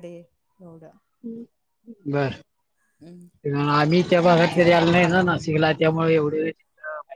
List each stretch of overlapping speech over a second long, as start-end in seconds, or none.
none